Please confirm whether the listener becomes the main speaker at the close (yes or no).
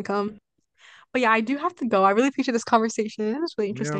yes